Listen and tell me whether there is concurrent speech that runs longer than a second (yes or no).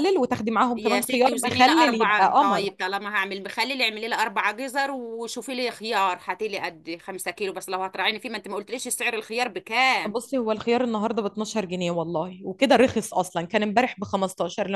yes